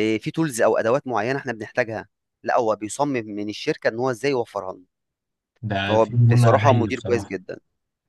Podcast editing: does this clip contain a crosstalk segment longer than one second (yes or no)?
yes